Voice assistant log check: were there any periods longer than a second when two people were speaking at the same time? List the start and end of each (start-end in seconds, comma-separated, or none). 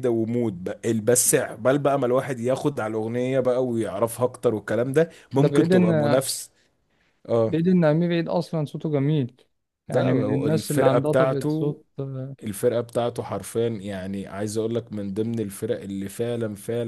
9.9-11.8